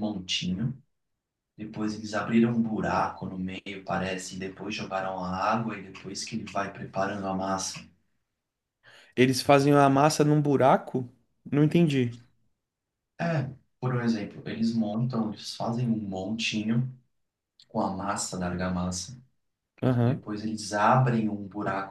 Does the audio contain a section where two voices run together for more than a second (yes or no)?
no